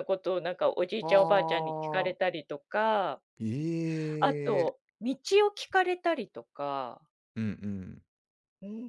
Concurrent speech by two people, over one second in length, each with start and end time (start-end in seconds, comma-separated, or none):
1.0-2.3